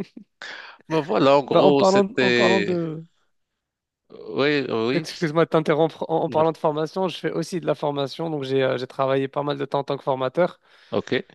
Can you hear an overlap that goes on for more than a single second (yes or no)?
yes